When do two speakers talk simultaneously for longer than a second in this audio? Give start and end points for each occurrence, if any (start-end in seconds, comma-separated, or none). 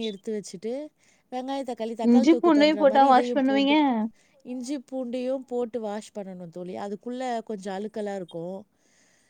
2.1-3.8